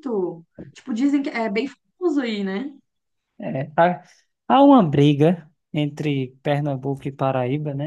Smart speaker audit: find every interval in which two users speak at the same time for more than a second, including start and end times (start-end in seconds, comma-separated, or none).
none